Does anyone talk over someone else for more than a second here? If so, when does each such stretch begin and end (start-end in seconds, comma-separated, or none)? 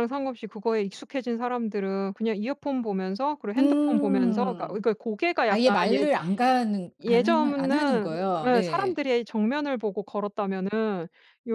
3.6-4.8, 7.0-9.0